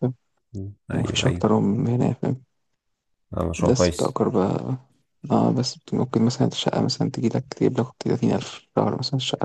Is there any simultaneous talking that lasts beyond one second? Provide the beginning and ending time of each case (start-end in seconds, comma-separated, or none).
none